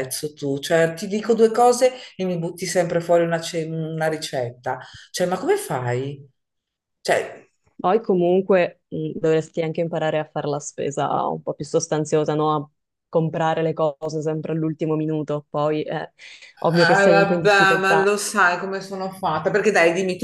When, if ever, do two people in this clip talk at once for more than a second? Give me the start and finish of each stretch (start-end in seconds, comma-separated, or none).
16.8-18.1